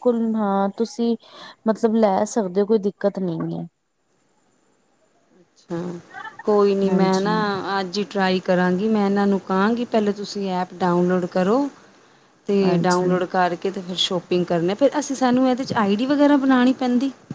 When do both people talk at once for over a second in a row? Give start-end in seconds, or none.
none